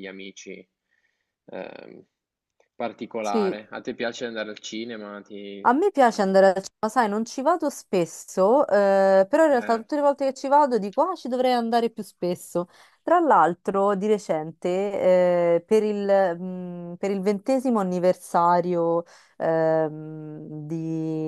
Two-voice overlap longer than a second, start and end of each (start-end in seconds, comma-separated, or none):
none